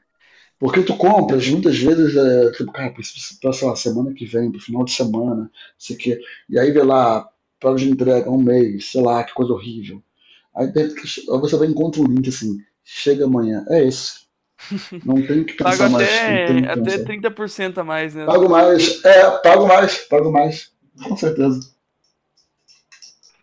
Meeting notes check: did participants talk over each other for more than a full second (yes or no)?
yes